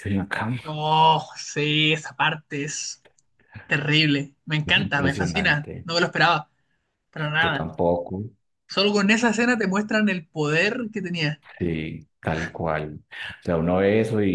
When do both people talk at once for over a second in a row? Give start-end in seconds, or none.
4.7-5.9